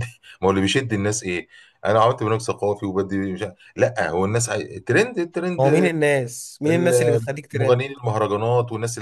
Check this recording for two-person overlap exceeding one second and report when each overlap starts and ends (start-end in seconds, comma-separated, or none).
6.7-7.9